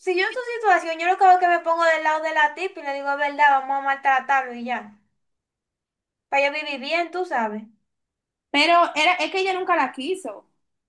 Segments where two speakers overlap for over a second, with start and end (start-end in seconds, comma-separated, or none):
none